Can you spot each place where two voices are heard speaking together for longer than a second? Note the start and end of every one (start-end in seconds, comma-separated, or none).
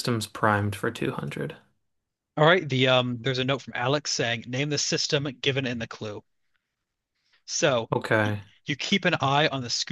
none